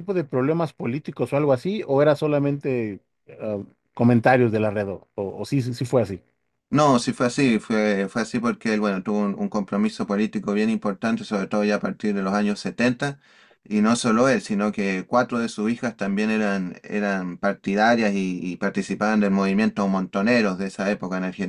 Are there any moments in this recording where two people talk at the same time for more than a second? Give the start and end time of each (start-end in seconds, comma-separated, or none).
none